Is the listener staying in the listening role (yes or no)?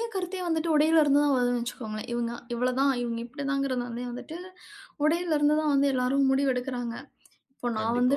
yes